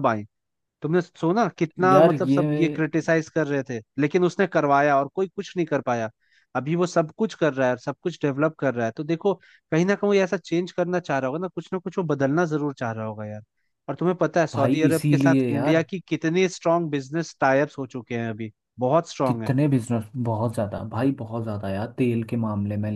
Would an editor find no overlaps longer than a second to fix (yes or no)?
no